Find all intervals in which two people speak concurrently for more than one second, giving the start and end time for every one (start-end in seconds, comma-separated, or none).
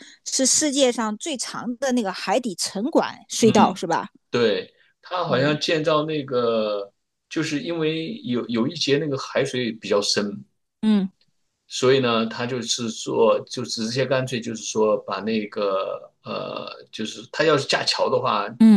none